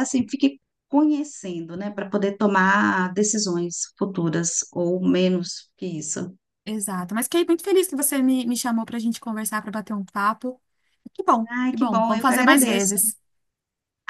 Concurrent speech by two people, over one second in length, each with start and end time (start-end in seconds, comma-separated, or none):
11.5-13.0